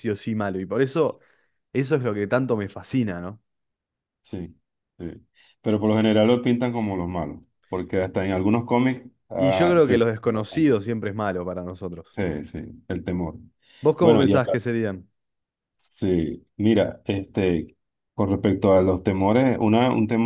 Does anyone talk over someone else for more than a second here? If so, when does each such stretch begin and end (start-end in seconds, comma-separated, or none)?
9.3-10.8